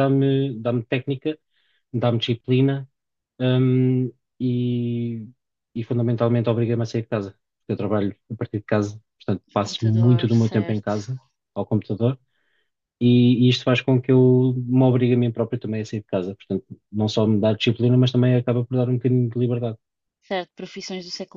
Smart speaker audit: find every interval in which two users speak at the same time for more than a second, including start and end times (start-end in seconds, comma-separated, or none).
9.6-10.9